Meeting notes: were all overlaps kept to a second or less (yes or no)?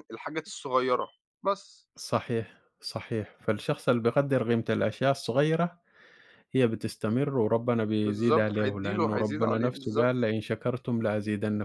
no